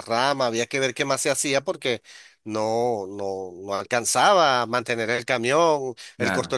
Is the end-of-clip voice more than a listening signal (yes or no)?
no